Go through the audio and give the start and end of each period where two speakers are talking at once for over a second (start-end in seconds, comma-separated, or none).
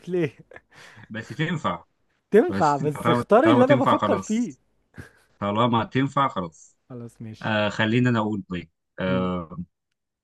2.5-4.5